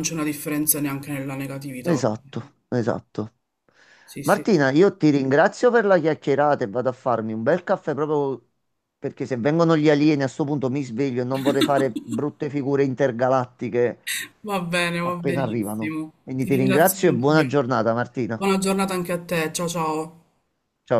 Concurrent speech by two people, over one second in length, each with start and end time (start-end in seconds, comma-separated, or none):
15.0-17.5